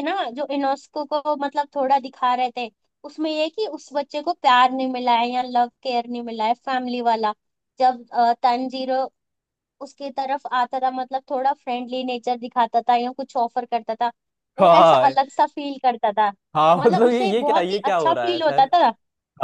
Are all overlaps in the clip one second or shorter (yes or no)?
no